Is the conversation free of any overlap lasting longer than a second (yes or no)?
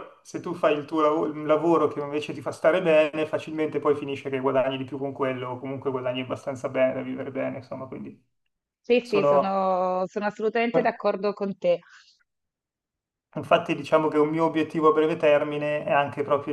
yes